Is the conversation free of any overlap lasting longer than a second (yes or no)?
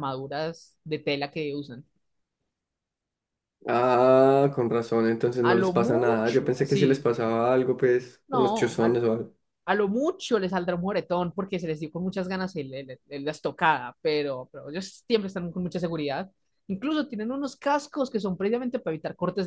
no